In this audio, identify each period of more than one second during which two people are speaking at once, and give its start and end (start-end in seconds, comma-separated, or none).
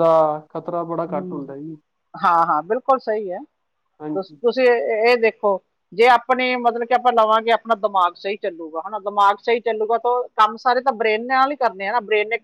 none